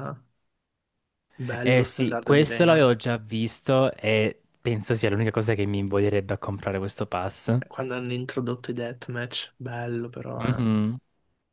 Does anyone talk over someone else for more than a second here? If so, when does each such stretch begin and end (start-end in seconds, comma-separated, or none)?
1.6-3.1